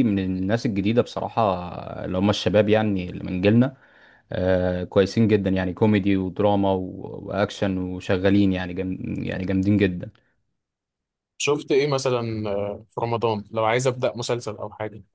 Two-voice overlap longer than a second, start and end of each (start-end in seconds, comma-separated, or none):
none